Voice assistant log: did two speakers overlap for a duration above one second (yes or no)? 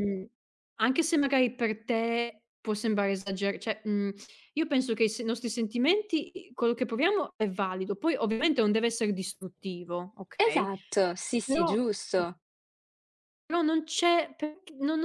no